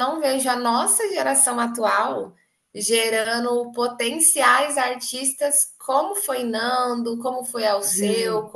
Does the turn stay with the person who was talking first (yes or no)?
yes